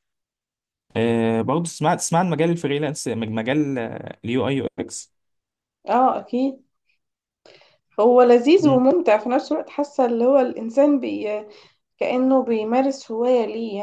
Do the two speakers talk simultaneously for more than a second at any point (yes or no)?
no